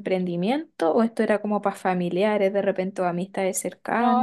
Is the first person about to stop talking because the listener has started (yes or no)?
yes